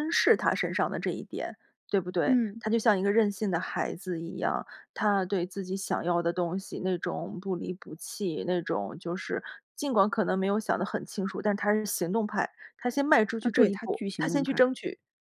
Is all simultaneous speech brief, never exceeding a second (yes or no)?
no